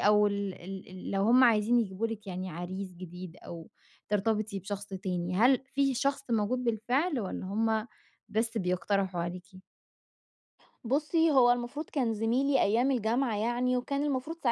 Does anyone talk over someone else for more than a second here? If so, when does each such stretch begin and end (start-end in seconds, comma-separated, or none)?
none